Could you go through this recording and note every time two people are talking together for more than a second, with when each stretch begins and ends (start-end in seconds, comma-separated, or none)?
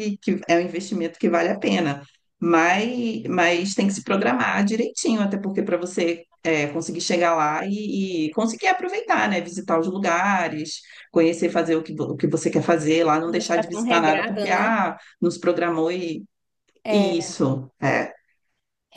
13.2-14.7